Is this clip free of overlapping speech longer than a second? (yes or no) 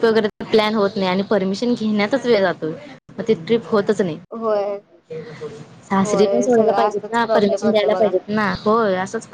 no